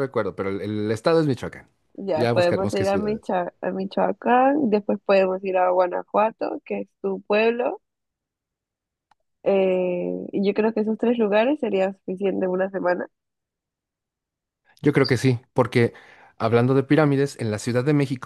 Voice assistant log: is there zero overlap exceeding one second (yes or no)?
no